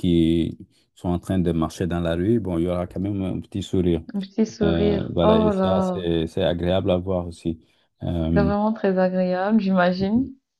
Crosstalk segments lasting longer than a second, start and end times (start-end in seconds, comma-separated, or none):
4.6-6.0